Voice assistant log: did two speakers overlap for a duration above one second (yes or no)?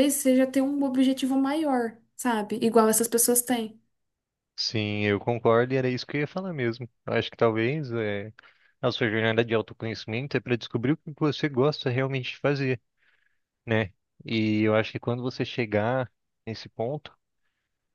no